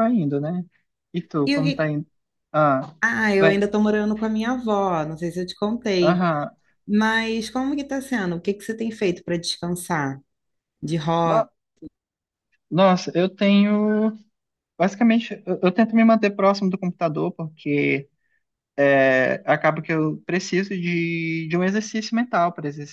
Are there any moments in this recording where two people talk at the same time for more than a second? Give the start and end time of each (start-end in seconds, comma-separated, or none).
none